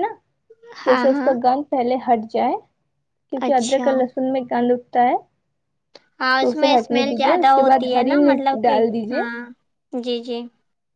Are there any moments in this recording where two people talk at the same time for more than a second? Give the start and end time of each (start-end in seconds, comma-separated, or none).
6.4-9.2